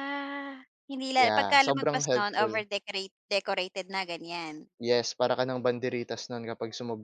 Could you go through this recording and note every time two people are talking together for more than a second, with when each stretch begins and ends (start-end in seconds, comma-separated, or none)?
1.2-2.6